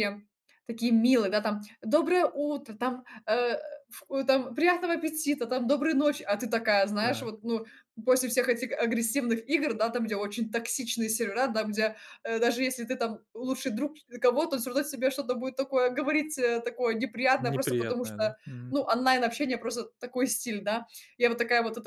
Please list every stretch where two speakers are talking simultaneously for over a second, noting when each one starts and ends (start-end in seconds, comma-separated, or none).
17.4-18.8